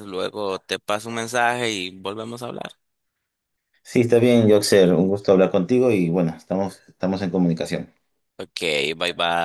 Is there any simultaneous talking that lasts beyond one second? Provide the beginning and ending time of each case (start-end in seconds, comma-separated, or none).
none